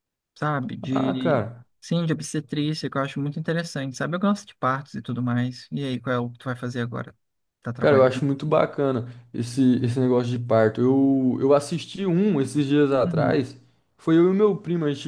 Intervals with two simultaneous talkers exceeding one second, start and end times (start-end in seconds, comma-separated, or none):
none